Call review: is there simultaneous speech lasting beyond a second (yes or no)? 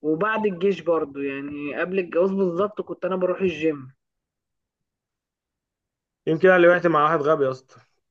no